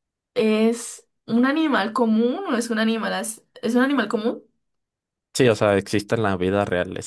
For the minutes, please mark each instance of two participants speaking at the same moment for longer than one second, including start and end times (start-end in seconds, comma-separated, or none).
none